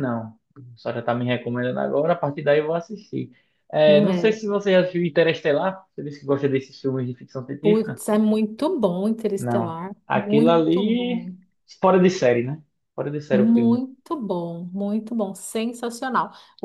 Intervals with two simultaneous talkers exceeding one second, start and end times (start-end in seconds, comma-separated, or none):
9.4-11.3